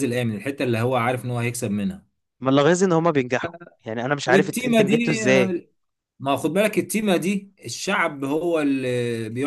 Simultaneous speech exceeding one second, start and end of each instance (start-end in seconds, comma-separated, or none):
4.2-5.5